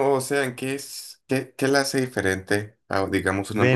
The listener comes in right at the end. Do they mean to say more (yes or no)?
yes